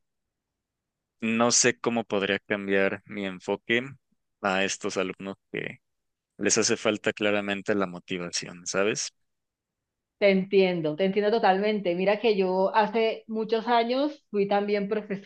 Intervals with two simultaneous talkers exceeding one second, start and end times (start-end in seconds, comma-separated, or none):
none